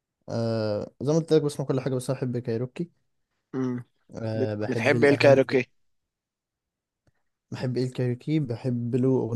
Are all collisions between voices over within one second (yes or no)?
no